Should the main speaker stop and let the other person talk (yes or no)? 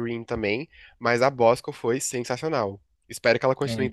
no